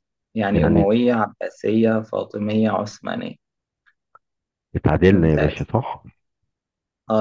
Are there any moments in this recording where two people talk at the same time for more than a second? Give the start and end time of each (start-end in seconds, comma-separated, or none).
none